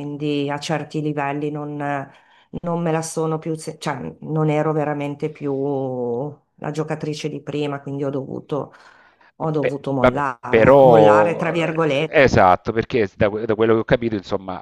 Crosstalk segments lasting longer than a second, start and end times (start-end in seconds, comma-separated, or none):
9.6-12.2